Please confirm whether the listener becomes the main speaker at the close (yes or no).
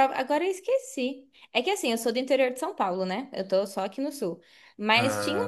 no